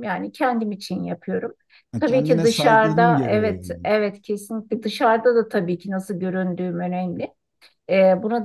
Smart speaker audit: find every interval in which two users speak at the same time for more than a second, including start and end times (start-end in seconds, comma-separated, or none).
2.0-3.9